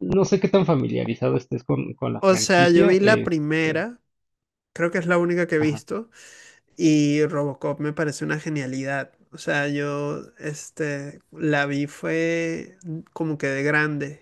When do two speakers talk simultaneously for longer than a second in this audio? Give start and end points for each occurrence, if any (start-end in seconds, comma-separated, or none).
2.2-3.9